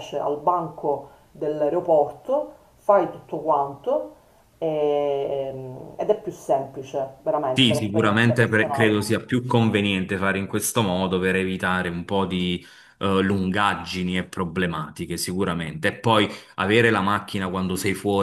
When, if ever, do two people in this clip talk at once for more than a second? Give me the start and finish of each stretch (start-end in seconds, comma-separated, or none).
7.5-8.9